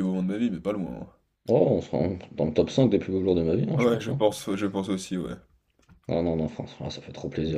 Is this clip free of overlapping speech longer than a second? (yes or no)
yes